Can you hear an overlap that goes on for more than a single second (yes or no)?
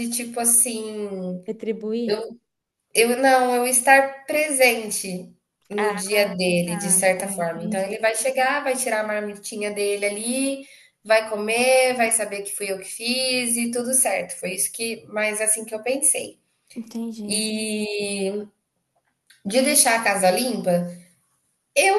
yes